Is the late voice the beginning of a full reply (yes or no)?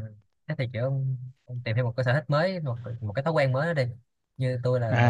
yes